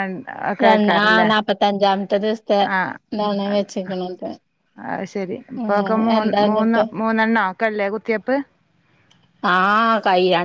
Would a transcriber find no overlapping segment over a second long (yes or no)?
yes